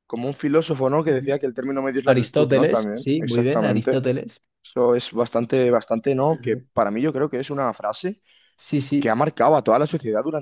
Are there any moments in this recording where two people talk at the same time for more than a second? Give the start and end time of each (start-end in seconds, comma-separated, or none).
2.0-4.0